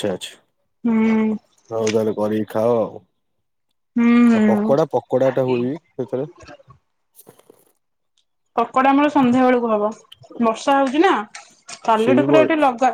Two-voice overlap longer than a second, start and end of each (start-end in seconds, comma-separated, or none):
none